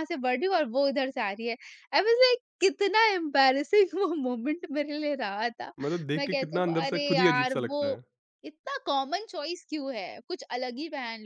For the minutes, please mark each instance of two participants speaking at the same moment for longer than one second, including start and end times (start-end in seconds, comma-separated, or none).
6.2-8.0